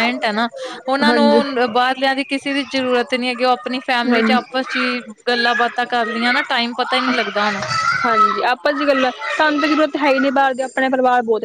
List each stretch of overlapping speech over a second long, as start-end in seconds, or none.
none